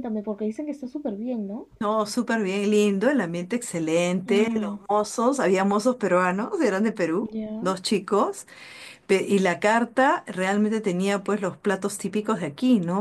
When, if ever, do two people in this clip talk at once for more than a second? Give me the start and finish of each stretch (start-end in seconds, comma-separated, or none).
none